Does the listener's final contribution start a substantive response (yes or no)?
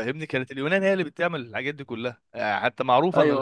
no